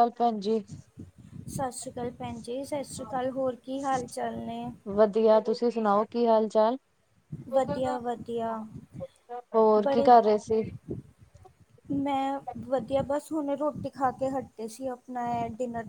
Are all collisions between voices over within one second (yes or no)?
yes